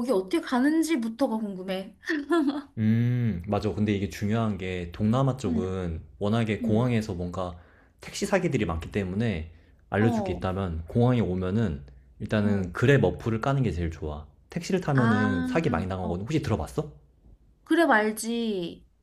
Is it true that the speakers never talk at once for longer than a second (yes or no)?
no